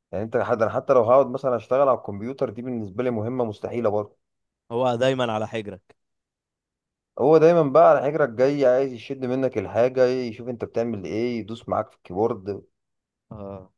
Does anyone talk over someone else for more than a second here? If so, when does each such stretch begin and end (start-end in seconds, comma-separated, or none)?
none